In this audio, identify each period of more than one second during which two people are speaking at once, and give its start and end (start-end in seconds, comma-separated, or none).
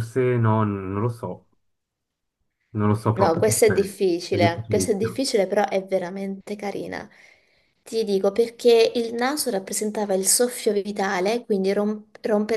3.1-5.2